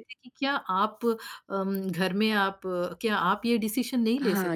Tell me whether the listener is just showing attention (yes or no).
no